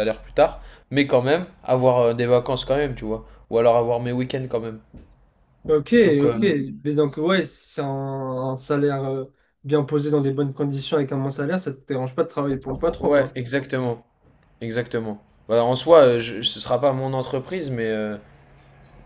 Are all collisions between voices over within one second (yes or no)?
yes